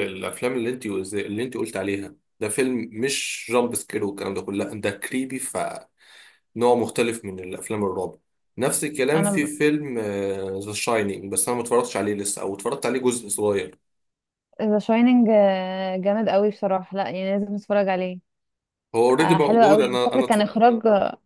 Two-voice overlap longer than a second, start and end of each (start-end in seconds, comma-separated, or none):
19.2-20.5